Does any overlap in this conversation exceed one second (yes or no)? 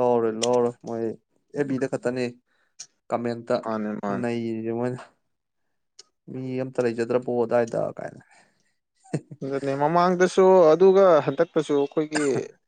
no